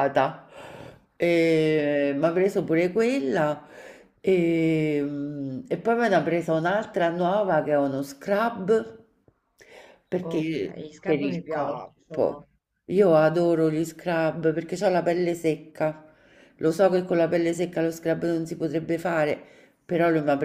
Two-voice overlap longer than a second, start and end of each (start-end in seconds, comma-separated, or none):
10.2-12.5